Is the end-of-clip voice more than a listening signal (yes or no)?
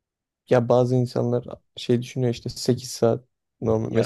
no